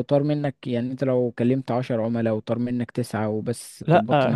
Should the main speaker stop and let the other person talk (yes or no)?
yes